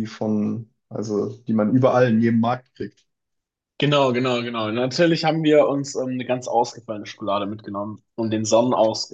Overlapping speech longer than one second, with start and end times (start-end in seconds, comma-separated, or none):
none